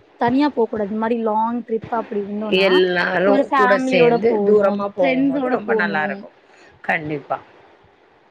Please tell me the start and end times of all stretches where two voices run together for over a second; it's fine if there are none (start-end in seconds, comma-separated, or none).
3.3-6.0